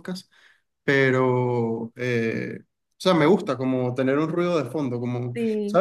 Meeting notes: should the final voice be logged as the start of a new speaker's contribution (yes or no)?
no